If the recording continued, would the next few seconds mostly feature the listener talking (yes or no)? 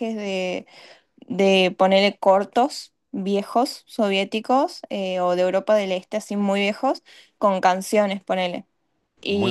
no